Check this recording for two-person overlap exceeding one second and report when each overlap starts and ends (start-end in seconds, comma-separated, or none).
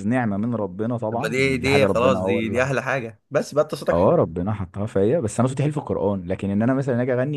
1.1-2.7